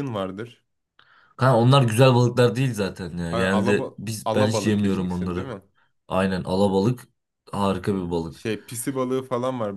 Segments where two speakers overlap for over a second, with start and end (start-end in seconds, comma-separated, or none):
3.3-5.5